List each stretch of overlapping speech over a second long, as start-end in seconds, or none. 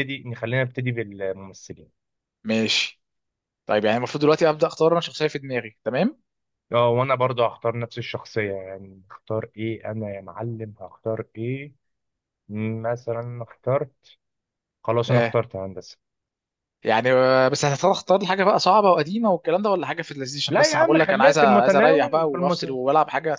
20.5-22.8